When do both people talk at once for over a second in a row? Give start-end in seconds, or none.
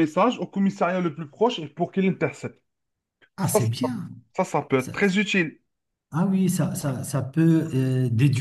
none